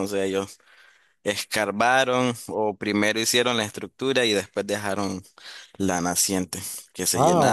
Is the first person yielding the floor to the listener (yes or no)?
yes